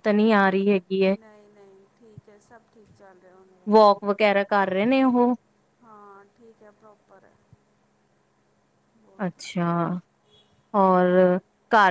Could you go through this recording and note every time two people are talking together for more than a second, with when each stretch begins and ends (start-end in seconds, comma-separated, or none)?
none